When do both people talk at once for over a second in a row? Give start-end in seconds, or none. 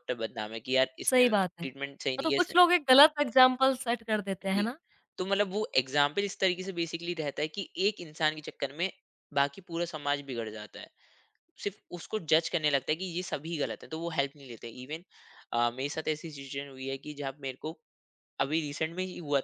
1.1-2.5